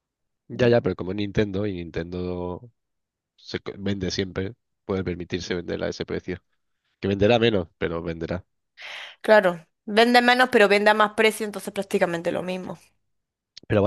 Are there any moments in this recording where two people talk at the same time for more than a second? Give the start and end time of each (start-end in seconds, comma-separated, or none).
none